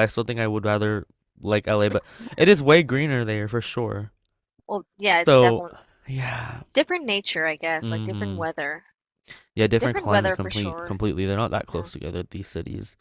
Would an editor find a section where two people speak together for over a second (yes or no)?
yes